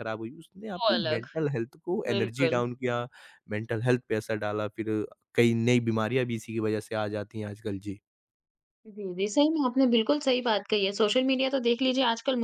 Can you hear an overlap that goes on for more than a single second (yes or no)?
no